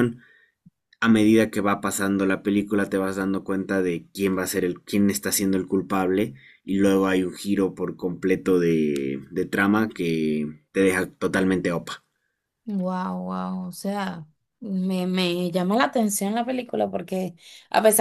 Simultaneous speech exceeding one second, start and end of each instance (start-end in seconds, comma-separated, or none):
none